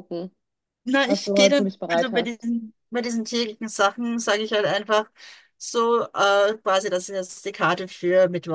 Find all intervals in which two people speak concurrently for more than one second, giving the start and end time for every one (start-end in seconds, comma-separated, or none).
1.1-2.5